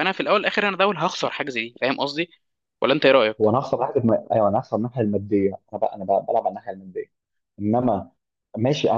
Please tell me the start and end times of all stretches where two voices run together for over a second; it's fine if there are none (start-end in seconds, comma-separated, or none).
none